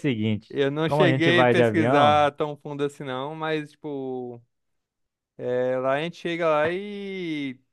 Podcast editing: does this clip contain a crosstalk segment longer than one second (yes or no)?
yes